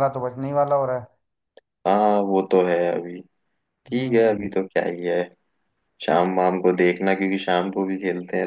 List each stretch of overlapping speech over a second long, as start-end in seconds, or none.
none